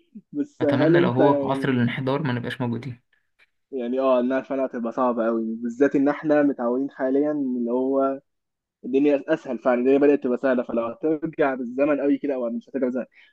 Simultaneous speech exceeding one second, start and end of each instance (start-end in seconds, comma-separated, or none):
0.6-1.9